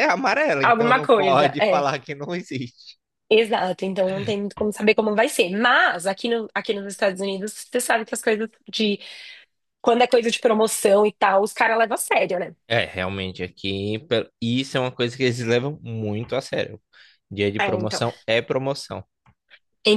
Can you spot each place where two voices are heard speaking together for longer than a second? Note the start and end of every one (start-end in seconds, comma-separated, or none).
0.6-1.9